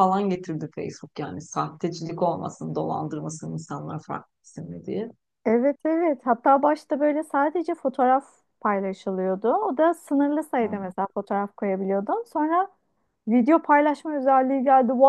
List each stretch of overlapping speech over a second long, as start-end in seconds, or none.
none